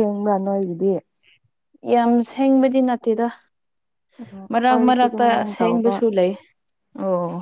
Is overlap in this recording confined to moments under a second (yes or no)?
no